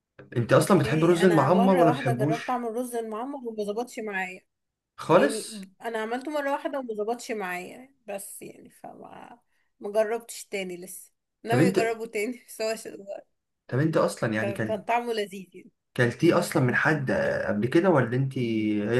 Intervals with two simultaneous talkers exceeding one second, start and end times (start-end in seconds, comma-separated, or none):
0.5-2.7